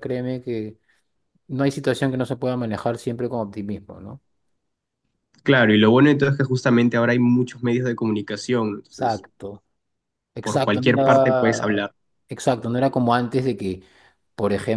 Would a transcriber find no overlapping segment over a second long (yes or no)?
no